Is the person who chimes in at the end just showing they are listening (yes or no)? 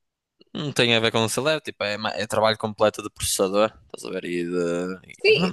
no